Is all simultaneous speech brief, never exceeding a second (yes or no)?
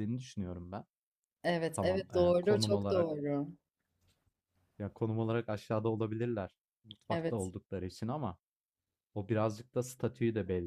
no